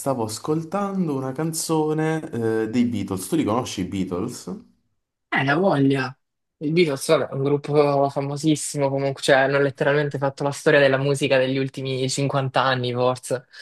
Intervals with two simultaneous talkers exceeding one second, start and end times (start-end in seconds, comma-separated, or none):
none